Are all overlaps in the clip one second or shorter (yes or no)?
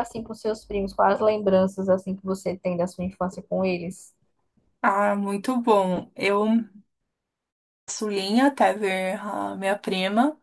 yes